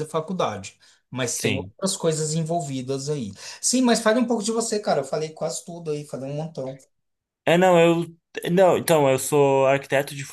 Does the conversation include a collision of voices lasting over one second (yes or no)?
no